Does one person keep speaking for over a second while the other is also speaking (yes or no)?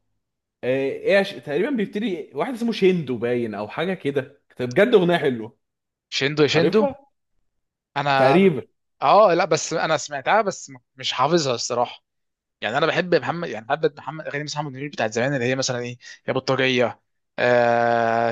no